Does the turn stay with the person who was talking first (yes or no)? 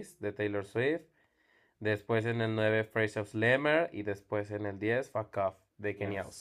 no